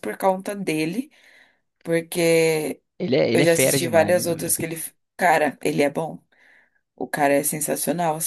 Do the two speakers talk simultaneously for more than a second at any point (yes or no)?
yes